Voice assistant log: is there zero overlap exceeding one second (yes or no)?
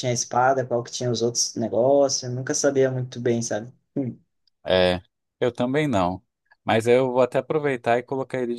yes